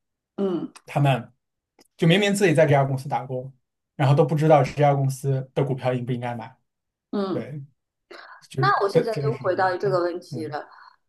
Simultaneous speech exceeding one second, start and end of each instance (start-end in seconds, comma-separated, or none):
8.6-10.6